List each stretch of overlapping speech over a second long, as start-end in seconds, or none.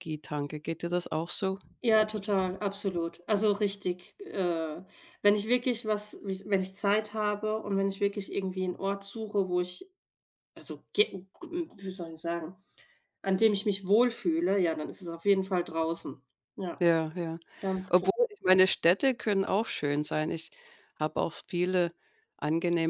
none